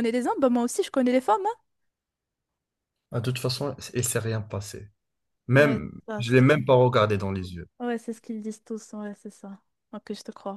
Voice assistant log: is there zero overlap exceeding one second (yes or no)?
no